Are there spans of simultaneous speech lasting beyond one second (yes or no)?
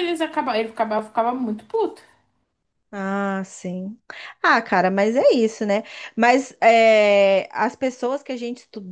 no